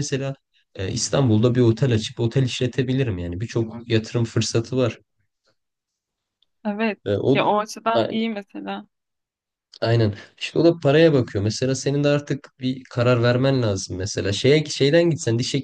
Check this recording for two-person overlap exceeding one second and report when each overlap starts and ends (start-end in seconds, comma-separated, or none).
none